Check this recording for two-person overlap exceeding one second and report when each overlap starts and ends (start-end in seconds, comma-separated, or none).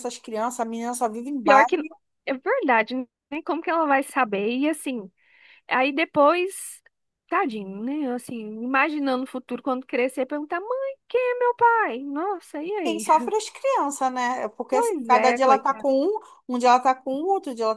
14.7-15.9